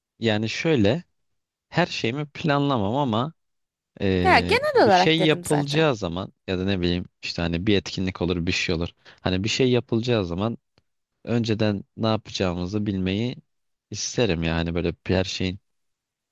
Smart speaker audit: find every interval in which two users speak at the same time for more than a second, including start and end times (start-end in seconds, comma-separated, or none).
4.2-5.9